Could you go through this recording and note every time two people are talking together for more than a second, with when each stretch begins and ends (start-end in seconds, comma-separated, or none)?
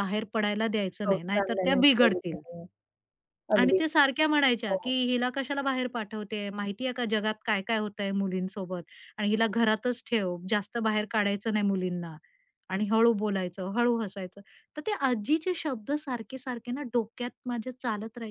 1.0-2.4